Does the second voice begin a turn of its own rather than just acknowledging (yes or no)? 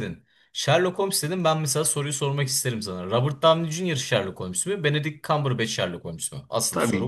yes